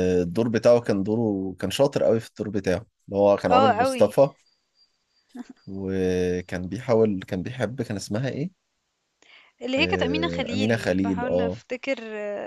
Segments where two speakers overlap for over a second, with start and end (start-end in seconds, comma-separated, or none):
9.8-11.6